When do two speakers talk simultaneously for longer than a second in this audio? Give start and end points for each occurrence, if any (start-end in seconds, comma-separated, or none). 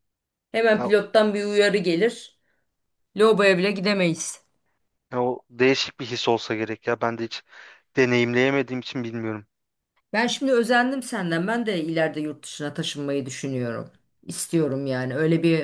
none